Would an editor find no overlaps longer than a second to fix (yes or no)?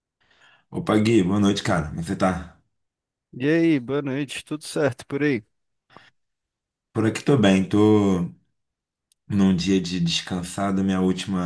yes